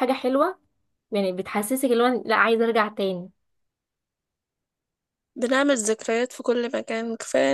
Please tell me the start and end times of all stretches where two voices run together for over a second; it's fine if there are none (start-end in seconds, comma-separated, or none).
none